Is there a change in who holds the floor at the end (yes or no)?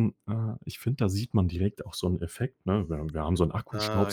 no